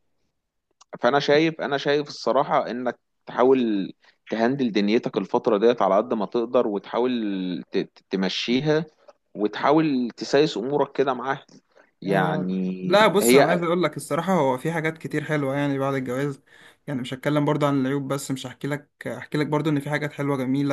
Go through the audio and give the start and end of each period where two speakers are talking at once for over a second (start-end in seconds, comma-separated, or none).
12.1-13.7